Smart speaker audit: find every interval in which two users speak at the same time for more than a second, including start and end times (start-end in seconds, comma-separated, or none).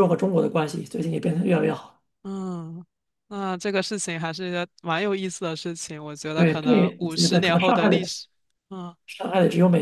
6.3-8.1